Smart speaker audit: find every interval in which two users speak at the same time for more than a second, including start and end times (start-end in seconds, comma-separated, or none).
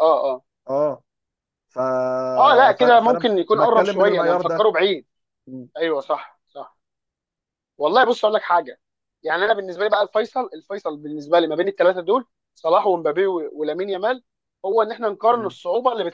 2.7-4.7